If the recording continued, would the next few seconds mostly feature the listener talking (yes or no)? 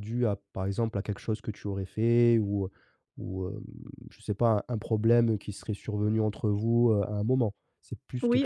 yes